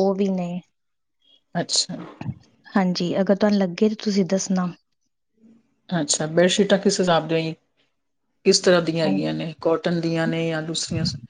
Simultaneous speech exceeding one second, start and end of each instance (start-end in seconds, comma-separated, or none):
none